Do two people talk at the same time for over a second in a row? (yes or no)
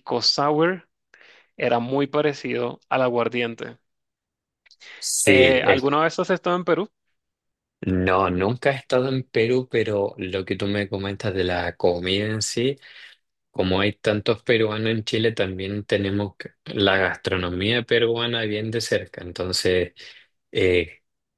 no